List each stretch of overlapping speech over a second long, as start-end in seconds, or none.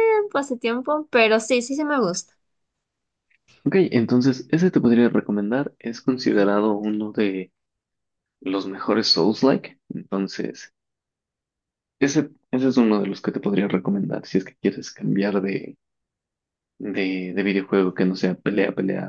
none